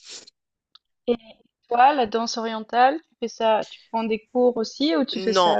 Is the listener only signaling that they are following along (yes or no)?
no